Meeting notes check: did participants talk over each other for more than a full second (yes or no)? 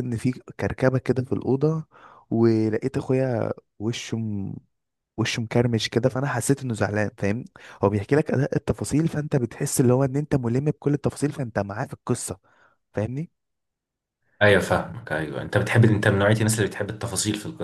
no